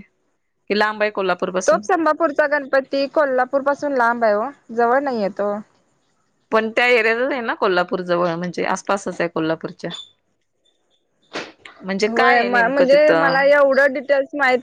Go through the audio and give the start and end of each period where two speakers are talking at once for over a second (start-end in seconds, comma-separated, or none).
12.1-13.5